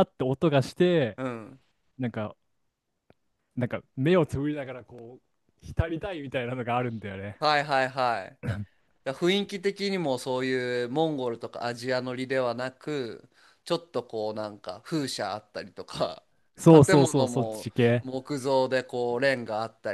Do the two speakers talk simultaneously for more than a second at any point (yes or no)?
yes